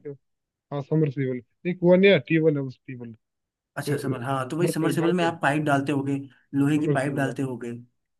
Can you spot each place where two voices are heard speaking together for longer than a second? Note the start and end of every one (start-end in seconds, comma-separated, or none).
3.8-5.3